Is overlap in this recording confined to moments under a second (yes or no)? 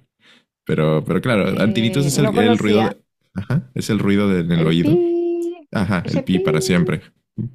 no